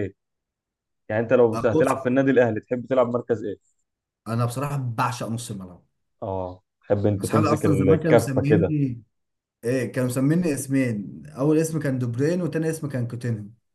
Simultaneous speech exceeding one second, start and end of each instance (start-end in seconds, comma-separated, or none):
7.2-8.7